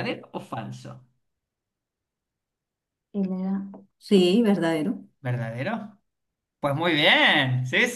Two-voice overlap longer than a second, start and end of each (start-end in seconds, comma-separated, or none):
none